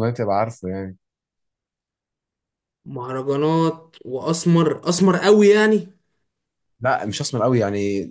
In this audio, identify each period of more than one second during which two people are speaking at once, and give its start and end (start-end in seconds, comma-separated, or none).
none